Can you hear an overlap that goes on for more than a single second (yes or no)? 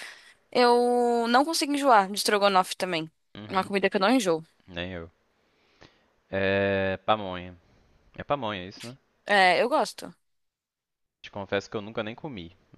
no